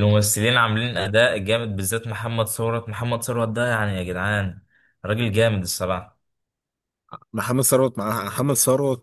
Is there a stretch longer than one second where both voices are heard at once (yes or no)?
no